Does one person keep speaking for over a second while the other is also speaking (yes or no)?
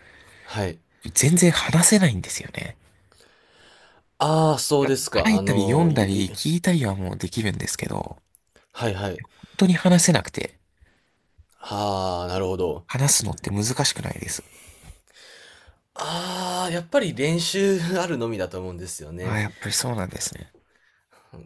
yes